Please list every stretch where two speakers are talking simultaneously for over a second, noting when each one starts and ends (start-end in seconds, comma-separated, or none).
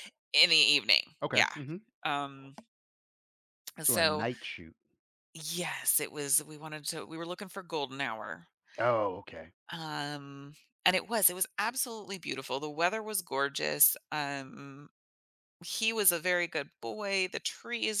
none